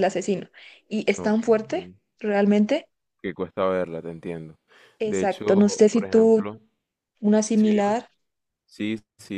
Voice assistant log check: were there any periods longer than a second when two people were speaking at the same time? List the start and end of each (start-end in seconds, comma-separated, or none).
5.0-6.5